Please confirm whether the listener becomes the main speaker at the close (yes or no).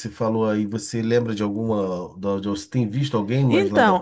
yes